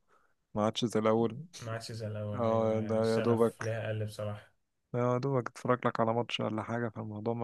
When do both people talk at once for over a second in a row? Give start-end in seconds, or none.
2.3-3.8